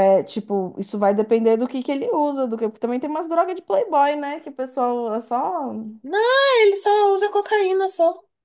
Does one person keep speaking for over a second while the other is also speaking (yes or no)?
no